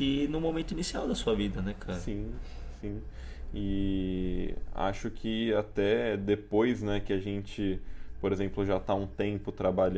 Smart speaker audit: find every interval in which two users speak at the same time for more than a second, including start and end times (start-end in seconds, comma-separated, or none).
none